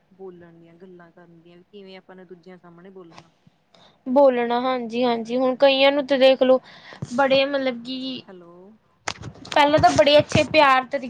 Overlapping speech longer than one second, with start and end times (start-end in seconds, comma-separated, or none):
none